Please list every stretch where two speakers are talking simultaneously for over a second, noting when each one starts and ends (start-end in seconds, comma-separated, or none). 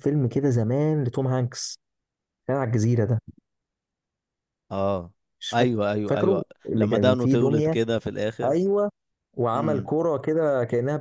5.5-7.8